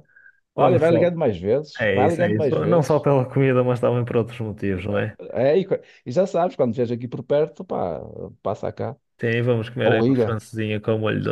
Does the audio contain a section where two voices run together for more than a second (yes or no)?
yes